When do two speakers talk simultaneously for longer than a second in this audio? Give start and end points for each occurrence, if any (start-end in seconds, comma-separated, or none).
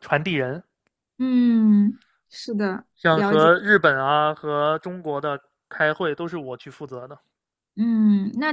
none